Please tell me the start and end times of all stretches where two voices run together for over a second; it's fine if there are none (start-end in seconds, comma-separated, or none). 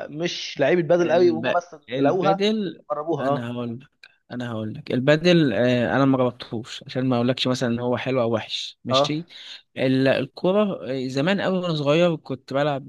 1.0-2.5